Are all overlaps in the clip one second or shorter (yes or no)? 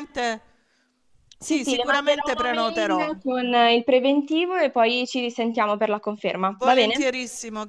no